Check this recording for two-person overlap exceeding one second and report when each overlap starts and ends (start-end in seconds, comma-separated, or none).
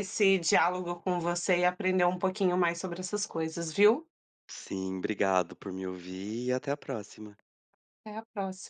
none